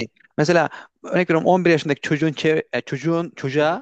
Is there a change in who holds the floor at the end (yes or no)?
no